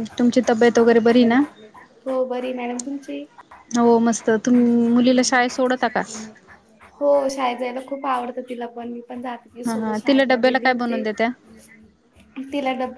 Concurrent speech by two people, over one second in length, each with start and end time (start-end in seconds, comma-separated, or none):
9.7-11.0